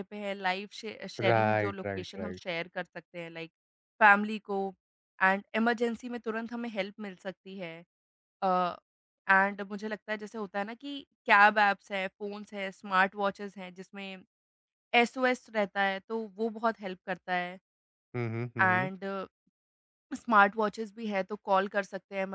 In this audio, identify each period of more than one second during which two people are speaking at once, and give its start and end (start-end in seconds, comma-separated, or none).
1.2-2.5